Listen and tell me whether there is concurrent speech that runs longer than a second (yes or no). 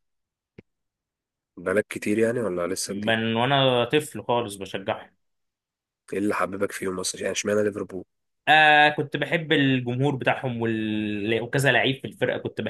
no